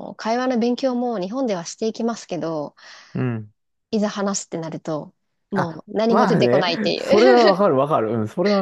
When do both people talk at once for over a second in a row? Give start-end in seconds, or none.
5.5-7.6